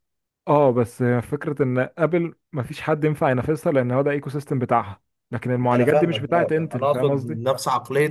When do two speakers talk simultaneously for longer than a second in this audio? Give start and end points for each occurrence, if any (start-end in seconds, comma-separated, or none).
5.7-7.4